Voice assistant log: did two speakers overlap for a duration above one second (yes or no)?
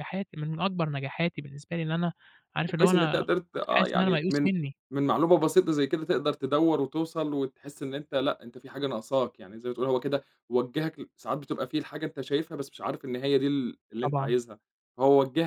yes